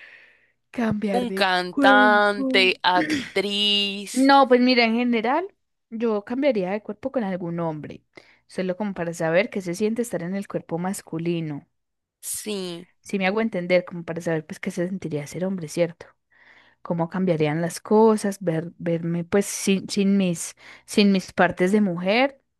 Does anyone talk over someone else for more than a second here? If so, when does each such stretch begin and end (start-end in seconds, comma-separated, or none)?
1.2-2.7